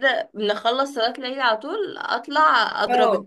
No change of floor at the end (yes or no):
yes